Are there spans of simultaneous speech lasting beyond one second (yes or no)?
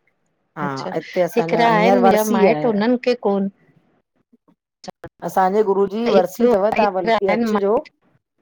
yes